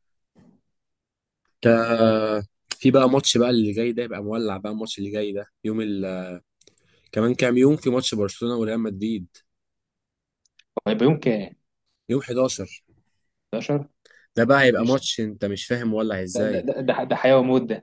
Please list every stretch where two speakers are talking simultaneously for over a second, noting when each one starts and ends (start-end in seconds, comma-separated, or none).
none